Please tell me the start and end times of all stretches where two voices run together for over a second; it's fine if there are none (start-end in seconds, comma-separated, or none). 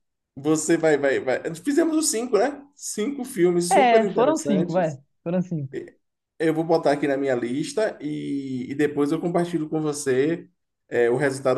3.7-5.0